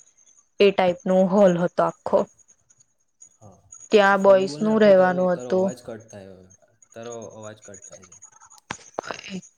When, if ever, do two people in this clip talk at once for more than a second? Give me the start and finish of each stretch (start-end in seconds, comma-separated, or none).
3.9-5.7